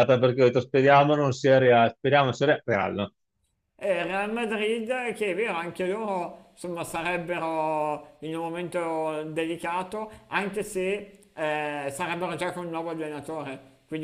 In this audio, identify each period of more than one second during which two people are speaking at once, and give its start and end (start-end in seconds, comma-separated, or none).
none